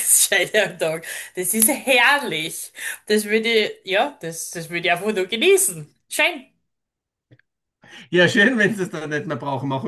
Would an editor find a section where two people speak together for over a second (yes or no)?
no